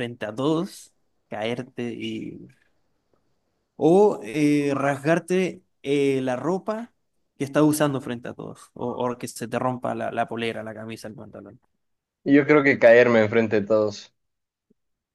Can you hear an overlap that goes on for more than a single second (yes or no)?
no